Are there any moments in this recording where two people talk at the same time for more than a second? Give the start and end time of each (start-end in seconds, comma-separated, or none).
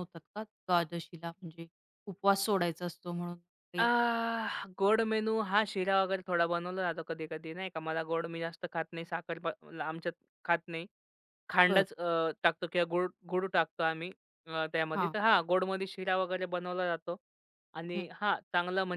none